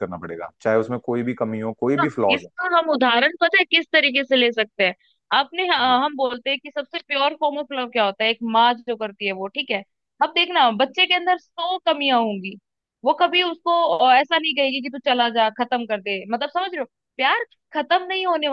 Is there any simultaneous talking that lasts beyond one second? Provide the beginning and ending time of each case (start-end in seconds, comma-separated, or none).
none